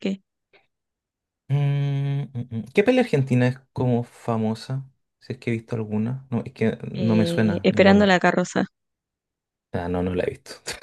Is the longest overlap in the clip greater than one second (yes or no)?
yes